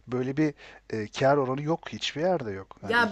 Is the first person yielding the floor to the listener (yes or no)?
yes